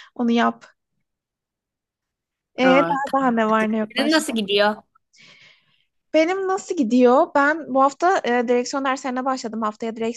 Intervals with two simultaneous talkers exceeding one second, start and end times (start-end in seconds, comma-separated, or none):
2.6-4.4